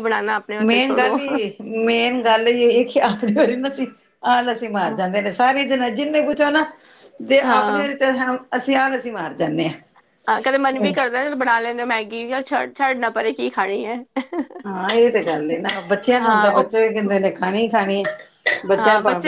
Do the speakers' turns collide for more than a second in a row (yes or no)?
no